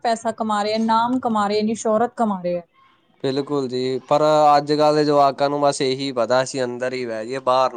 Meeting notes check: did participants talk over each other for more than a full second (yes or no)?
no